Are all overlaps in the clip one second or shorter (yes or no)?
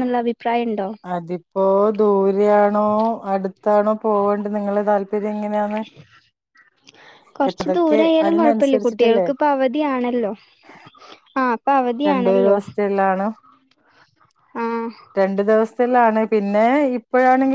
no